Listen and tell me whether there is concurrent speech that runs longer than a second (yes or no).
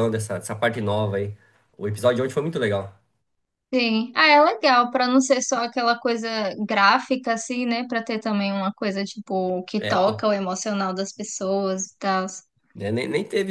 no